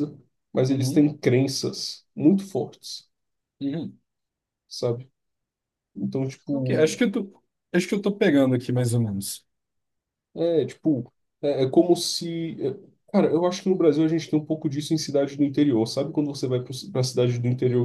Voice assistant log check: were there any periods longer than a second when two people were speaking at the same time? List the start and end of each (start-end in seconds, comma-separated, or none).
none